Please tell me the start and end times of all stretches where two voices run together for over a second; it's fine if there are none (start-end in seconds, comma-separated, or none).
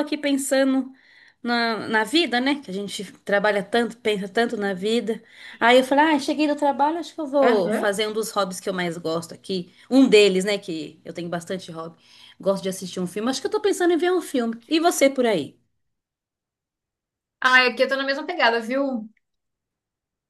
none